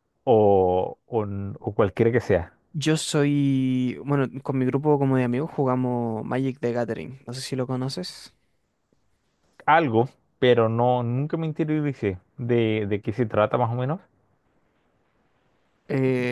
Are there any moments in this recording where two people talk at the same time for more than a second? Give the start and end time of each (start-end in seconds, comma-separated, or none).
none